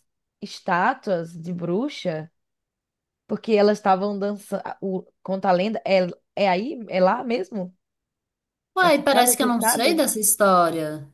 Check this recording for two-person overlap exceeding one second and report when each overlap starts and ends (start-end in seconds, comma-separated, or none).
8.8-10.0